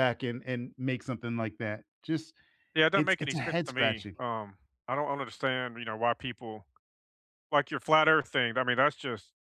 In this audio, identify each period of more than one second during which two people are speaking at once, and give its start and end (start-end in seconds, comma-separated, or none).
2.9-4.2